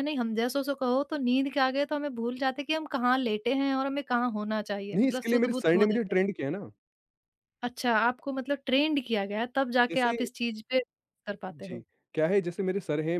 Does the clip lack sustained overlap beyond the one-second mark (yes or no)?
no